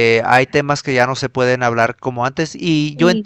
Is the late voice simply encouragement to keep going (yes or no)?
yes